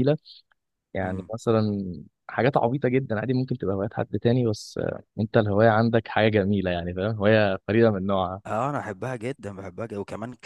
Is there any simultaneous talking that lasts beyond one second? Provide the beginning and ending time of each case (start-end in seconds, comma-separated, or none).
none